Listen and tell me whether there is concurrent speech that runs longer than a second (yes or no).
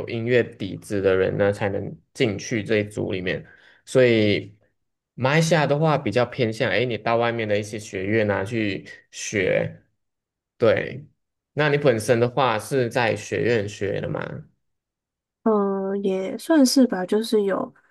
no